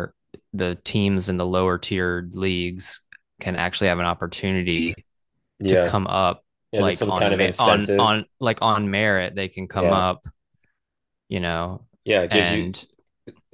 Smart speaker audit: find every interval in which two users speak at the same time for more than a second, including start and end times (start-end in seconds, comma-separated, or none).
6.7-8.2